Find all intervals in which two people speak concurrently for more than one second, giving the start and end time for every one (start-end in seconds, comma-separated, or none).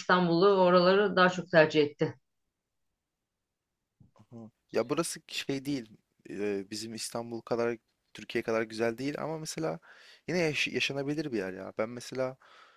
none